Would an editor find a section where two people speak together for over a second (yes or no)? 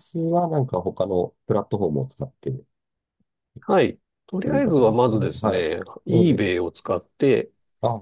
yes